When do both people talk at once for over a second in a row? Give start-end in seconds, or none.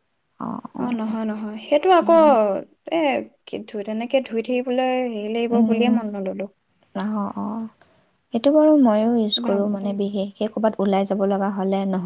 none